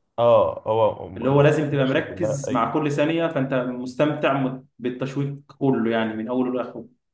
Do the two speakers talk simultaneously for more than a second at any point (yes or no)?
yes